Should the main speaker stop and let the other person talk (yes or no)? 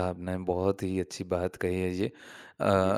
no